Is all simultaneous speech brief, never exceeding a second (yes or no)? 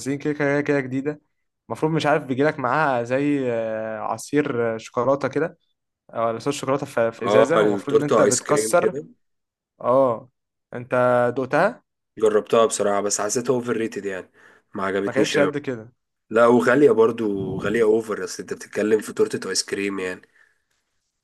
no